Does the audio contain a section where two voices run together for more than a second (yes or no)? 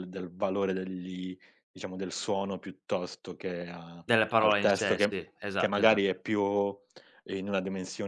yes